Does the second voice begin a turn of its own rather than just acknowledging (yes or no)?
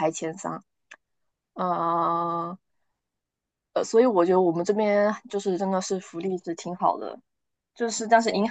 no